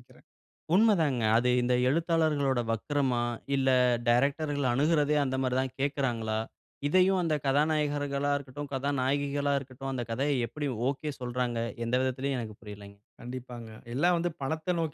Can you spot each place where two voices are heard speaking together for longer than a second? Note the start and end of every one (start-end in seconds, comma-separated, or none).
none